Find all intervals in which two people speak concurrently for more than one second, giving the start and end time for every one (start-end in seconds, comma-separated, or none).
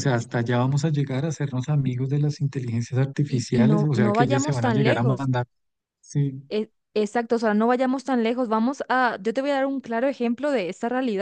3.3-5.3